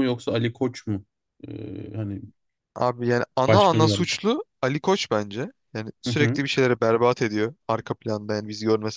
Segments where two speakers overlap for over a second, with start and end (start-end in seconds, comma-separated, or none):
none